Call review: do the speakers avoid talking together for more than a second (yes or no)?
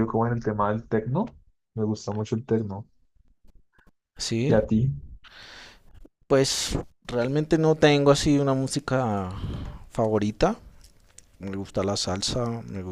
yes